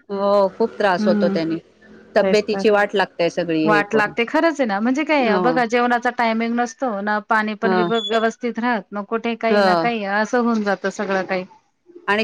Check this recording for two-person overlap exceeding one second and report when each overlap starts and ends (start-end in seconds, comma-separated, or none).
none